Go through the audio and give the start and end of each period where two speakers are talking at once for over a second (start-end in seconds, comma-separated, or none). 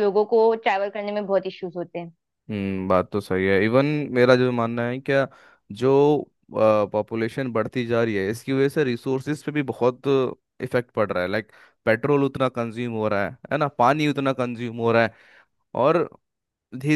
none